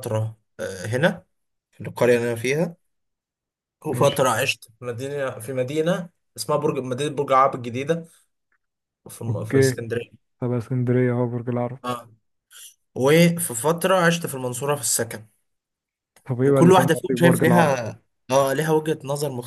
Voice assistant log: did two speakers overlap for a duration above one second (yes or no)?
yes